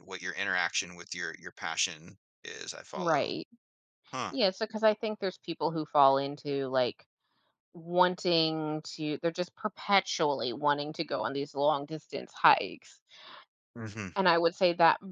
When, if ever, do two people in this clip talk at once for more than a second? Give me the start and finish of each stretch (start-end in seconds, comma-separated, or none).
none